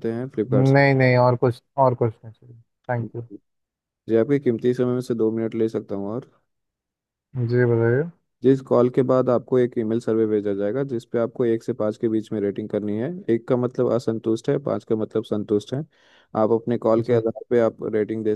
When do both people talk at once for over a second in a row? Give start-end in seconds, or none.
none